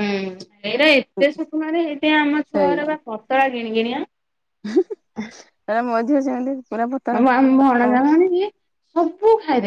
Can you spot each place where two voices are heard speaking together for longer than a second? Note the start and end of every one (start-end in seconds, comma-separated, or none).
none